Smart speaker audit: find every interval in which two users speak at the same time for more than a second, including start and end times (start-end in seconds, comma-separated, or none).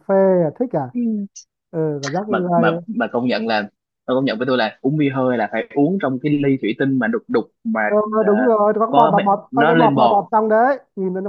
8.9-10.2